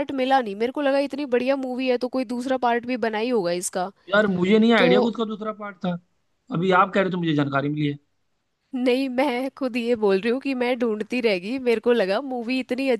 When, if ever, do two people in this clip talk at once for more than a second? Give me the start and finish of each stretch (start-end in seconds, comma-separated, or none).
none